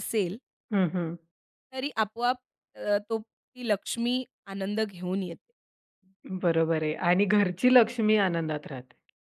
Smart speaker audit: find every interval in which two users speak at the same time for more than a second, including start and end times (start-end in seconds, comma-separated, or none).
none